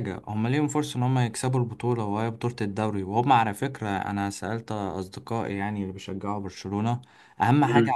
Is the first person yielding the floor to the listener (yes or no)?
no